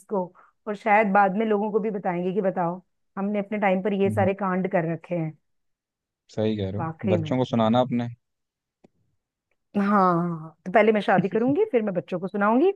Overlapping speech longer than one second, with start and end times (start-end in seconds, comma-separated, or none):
none